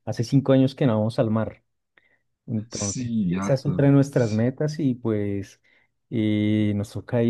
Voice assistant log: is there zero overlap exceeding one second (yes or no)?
no